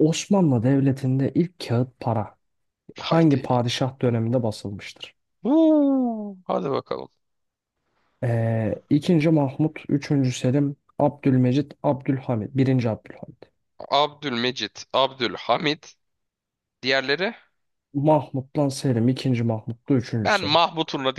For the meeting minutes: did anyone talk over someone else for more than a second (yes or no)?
no